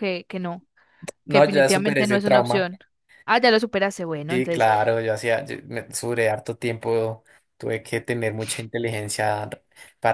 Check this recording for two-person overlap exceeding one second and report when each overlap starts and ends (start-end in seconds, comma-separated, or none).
1.3-2.7